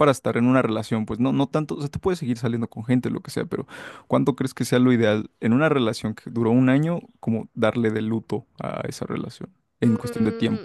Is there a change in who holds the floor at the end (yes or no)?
yes